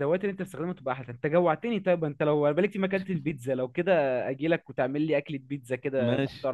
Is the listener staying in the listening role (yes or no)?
no